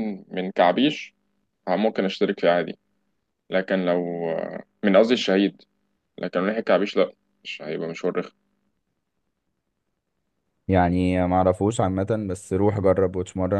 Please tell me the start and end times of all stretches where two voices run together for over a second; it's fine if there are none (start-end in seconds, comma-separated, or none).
none